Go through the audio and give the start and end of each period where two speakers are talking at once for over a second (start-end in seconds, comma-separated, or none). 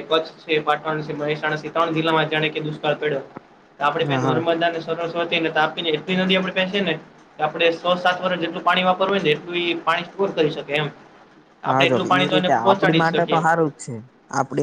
11.7-13.4